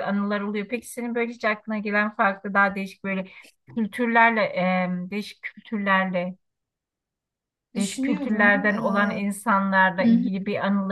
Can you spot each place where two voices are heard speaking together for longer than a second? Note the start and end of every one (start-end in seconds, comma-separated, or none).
7.8-9.1